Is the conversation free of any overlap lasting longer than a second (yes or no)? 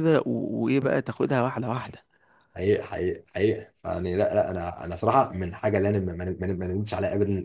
yes